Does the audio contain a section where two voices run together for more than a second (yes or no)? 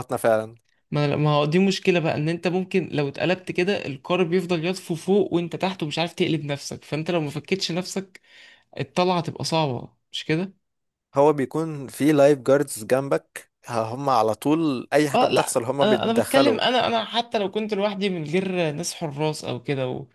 yes